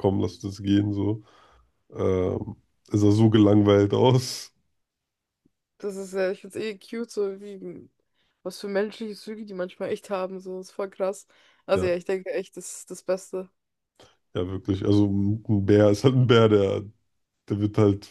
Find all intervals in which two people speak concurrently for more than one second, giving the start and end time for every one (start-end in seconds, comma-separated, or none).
none